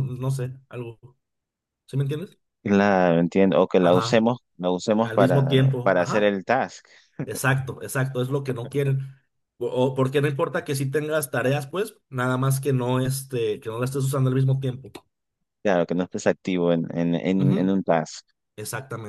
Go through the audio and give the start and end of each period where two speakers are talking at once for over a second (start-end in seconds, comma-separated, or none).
5.0-6.4